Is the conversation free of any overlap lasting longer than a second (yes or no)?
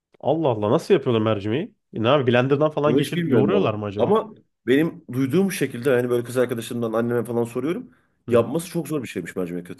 no